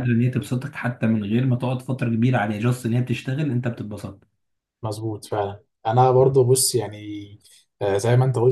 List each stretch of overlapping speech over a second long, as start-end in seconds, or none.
none